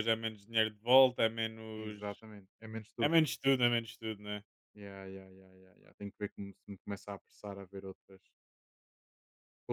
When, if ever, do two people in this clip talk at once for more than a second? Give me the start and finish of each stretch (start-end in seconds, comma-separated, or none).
none